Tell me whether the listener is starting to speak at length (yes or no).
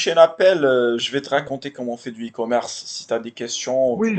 yes